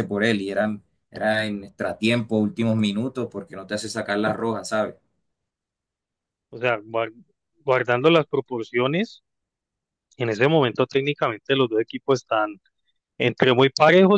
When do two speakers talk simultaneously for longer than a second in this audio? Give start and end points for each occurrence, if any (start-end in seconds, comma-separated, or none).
none